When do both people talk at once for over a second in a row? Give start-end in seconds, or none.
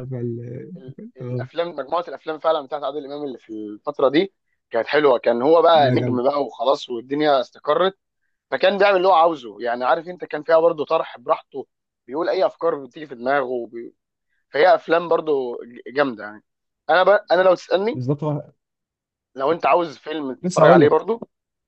none